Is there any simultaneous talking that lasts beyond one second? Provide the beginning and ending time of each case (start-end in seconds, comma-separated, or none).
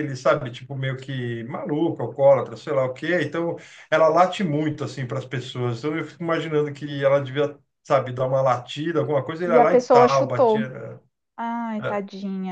9.4-10.7